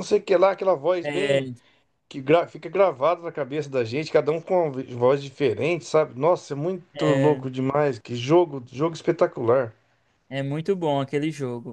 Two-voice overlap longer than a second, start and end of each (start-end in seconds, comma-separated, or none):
none